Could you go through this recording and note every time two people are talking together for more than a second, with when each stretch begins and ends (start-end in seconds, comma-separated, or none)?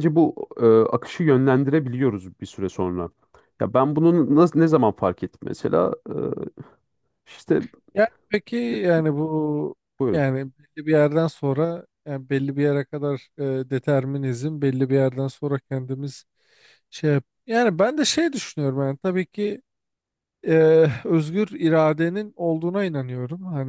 none